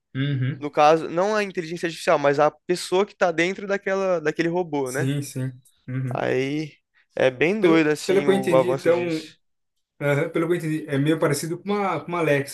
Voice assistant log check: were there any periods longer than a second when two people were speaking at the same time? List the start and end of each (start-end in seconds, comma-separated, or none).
7.6-9.0